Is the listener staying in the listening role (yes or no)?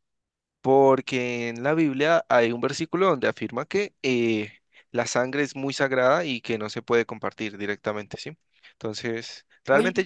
yes